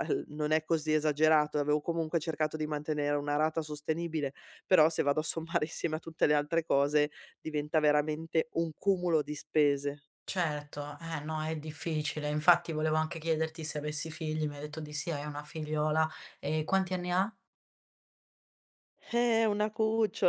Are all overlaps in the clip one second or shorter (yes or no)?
yes